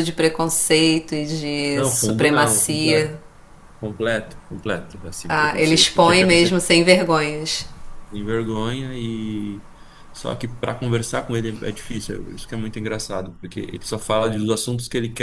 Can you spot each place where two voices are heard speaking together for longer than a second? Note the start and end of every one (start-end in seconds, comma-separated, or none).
1.7-3.1, 5.3-6.6